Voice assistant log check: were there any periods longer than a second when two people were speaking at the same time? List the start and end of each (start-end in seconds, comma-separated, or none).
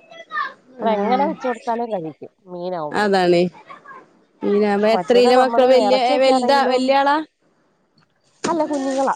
4.9-6.8